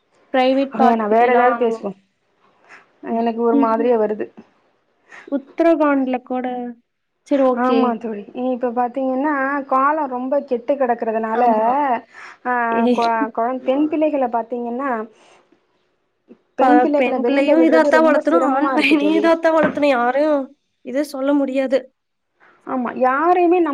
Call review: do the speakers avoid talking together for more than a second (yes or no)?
no